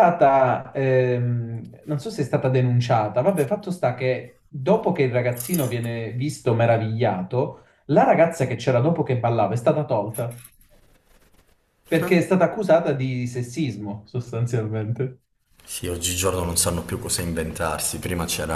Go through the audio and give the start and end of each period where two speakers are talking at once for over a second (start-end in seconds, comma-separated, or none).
none